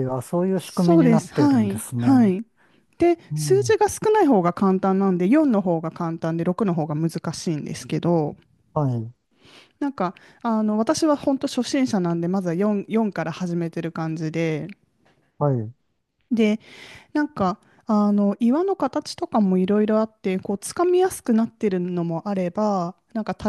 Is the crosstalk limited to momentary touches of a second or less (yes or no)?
no